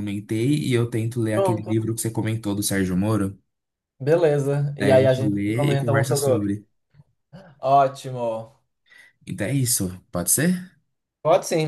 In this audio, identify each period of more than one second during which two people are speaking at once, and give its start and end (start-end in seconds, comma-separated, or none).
4.8-6.5